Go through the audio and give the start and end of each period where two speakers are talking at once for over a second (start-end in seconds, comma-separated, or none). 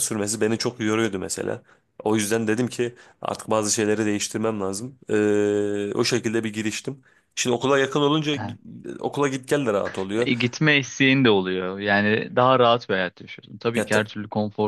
none